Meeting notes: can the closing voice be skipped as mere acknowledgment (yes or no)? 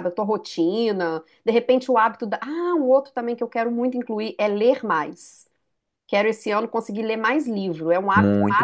no